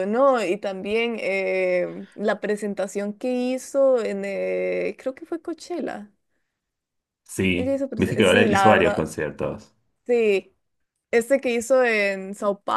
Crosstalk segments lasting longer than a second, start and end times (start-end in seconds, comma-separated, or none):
7.6-9.1